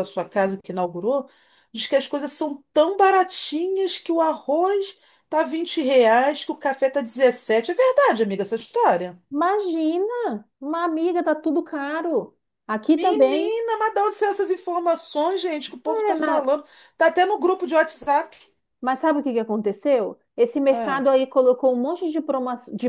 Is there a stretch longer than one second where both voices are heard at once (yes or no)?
no